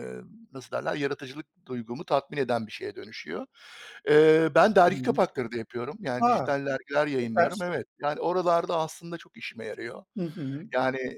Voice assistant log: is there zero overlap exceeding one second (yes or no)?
yes